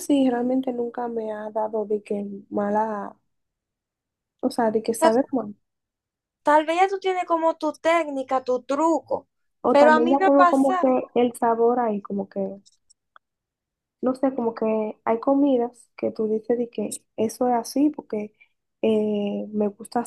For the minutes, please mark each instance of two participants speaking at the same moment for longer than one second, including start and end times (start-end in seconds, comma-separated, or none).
9.7-10.9